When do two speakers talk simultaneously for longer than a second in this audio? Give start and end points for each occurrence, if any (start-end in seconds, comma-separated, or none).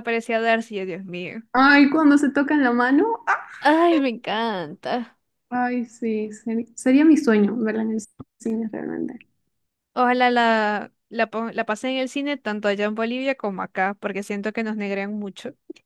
none